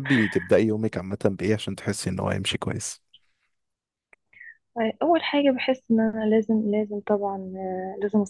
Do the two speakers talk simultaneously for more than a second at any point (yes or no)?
no